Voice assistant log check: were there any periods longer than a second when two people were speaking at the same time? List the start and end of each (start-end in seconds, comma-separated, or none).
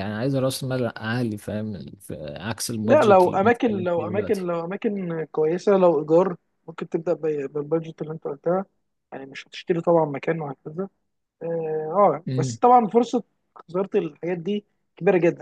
2.8-4.5